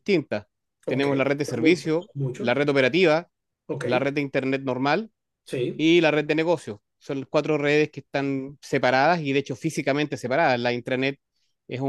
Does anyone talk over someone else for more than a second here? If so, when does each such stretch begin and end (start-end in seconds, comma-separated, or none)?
0.9-2.6